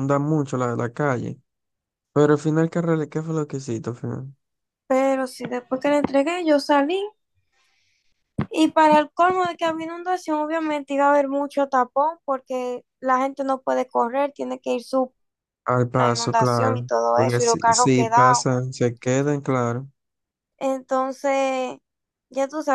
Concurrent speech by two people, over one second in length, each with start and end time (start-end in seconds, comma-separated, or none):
15.9-18.5